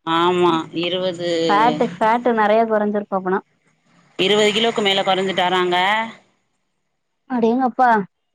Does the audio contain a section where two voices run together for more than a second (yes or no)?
no